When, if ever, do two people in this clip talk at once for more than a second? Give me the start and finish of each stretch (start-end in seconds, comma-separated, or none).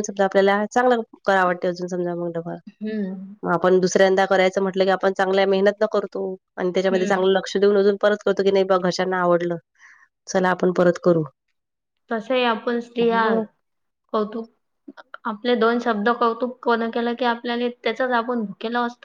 none